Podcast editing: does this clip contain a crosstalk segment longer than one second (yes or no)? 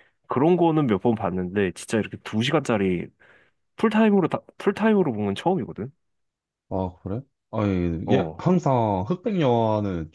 no